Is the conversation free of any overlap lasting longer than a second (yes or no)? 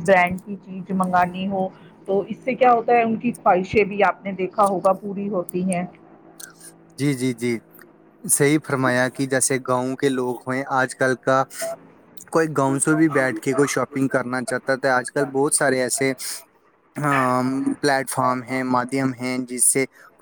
yes